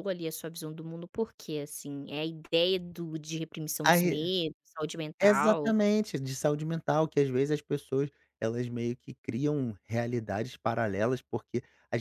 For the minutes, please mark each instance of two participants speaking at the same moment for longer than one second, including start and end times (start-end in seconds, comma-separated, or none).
none